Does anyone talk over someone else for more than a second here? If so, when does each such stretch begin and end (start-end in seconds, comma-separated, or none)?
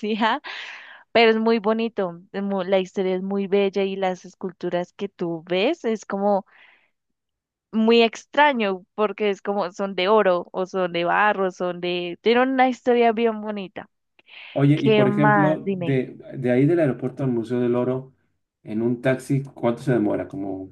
14.7-16.0